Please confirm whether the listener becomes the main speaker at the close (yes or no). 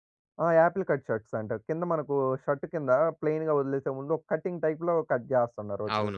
yes